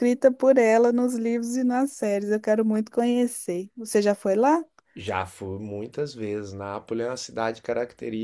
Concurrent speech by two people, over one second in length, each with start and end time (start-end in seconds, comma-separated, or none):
none